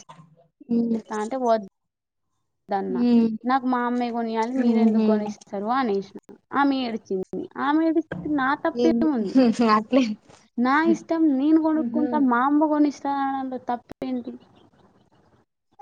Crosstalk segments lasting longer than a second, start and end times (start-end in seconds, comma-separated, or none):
none